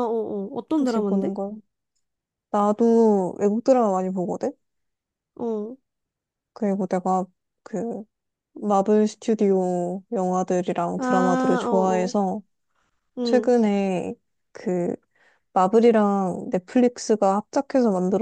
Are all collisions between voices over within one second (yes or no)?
no